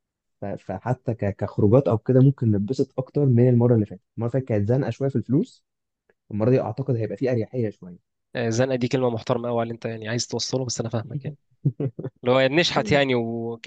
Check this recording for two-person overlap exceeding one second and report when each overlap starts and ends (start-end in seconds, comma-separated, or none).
none